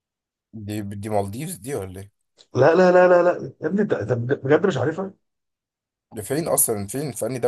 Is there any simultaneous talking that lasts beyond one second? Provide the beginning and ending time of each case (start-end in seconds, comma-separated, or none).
none